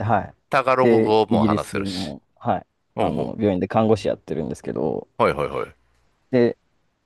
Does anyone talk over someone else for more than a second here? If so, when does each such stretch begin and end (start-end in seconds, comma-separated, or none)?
0.8-2.1